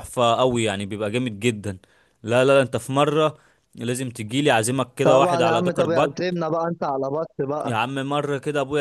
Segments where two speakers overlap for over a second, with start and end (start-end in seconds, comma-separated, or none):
5.0-6.4